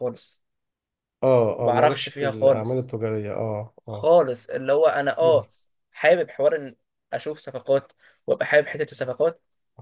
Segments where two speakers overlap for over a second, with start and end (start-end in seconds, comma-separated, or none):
1.6-2.9